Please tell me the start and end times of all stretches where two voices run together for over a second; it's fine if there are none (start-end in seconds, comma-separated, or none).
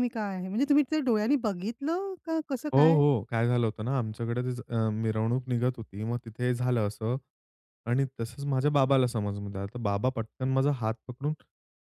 none